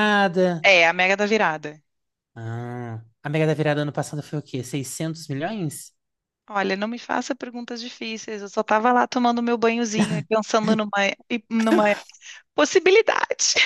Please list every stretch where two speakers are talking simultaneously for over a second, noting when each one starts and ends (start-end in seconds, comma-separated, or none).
none